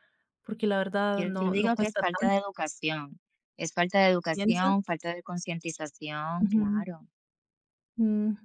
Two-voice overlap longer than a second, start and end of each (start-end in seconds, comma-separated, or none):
1.1-2.4